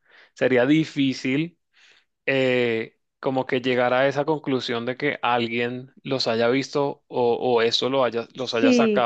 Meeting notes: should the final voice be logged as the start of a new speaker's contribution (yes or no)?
yes